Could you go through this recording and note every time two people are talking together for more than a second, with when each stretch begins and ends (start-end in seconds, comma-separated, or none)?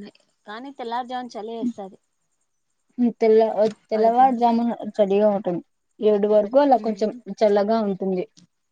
none